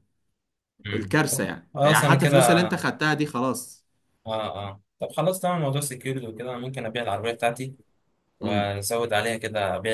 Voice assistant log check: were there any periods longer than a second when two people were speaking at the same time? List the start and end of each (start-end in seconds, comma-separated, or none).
0.9-2.7